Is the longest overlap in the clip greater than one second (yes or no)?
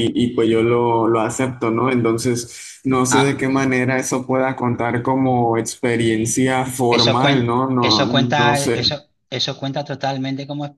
yes